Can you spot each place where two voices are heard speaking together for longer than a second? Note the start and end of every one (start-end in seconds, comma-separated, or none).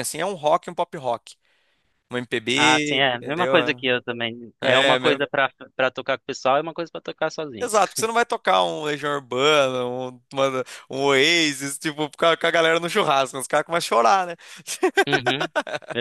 2.5-3.8